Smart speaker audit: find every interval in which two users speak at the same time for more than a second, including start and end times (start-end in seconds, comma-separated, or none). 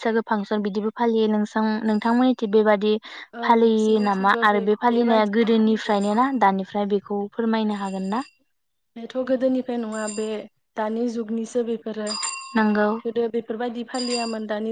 3.8-6.0